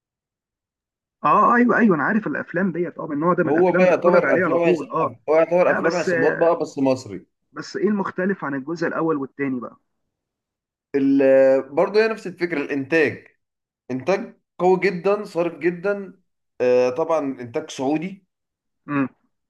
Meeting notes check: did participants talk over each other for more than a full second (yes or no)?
yes